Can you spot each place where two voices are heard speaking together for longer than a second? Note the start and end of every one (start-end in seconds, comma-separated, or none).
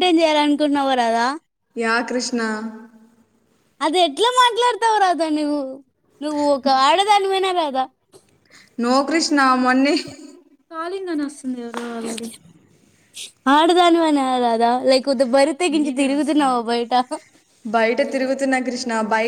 none